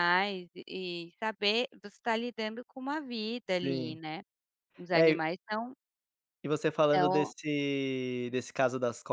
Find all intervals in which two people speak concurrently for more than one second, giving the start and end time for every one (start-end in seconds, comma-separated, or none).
none